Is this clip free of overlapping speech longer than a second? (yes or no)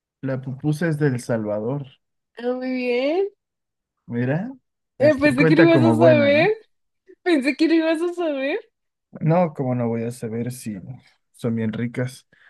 no